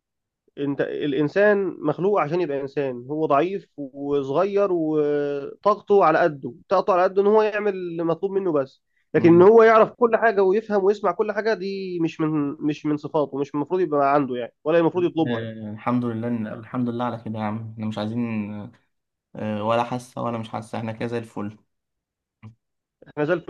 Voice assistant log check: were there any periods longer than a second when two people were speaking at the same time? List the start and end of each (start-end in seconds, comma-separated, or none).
none